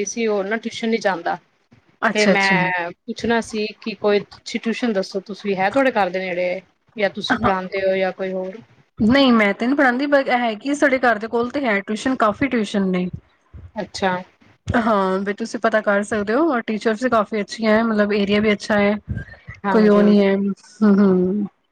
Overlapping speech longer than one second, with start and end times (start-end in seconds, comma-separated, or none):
none